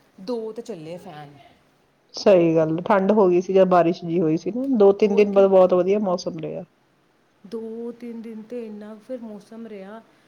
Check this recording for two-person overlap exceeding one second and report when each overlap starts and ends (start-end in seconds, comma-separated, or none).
none